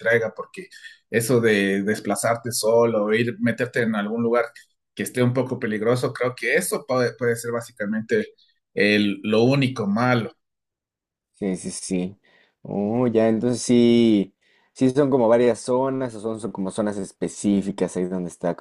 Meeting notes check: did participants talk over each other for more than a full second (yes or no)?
no